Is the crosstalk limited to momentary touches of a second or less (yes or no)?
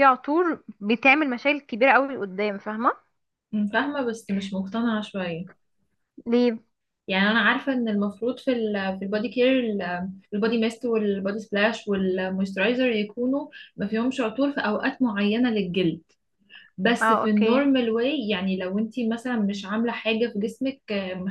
yes